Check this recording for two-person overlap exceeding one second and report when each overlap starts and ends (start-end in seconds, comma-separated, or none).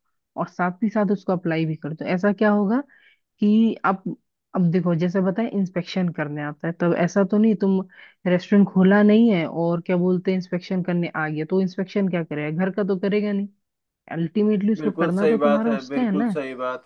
14.8-16.4